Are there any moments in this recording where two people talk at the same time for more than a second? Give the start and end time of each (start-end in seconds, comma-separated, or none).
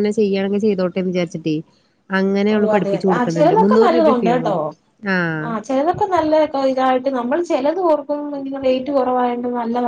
none